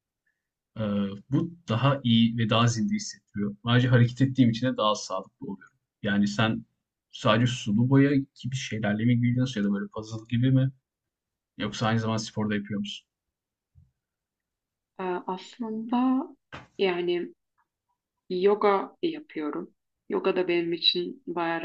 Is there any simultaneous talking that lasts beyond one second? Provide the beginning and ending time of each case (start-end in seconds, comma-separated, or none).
none